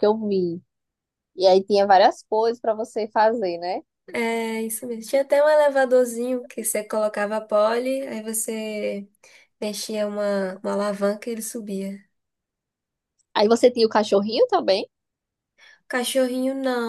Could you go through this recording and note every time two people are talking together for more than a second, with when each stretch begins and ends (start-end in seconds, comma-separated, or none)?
none